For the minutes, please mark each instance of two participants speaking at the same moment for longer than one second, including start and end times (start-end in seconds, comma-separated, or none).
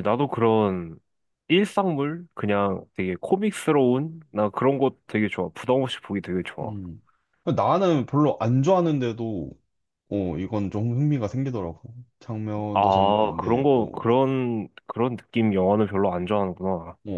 12.7-14.0